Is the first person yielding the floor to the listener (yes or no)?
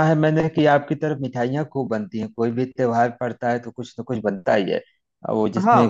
no